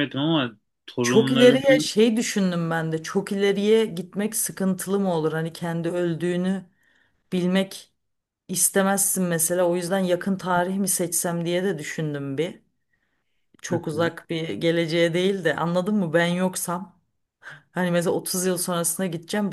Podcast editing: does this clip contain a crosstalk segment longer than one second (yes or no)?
no